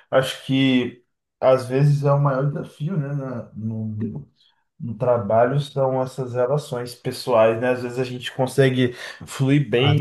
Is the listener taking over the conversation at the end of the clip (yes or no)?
no